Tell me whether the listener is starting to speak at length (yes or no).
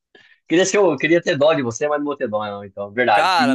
yes